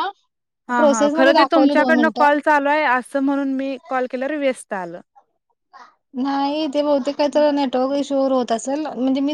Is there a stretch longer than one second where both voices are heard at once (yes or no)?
yes